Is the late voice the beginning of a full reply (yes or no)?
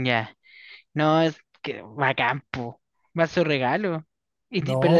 no